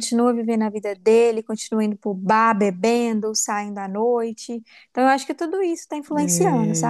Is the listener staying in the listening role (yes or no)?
no